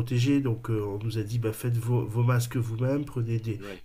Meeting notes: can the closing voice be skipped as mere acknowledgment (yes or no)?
yes